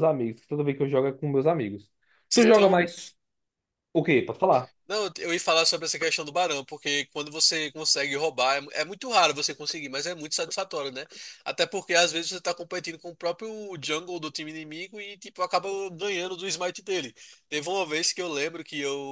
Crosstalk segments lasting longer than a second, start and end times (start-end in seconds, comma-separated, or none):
none